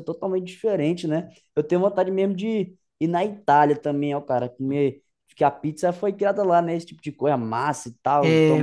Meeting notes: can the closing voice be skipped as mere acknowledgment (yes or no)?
no